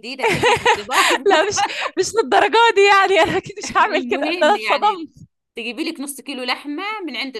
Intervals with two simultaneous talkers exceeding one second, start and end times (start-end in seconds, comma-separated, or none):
3.8-5.0